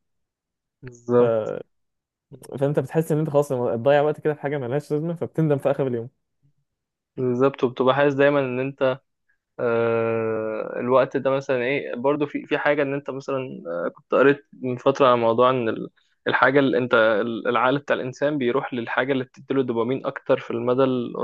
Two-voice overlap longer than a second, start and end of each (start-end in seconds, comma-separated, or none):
none